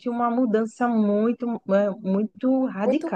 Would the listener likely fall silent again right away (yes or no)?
no